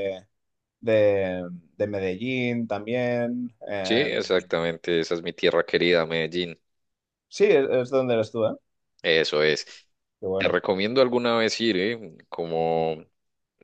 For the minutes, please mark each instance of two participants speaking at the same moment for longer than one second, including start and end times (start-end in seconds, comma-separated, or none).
none